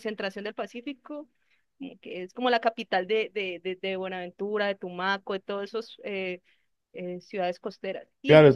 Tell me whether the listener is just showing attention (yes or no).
no